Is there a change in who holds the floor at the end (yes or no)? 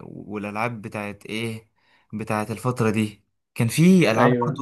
no